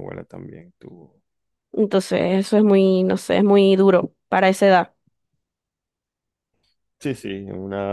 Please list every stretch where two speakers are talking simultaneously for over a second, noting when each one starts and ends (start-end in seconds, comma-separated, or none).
none